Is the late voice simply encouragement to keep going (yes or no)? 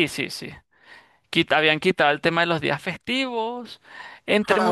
yes